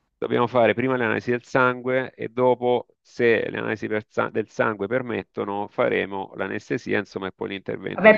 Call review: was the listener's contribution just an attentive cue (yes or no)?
no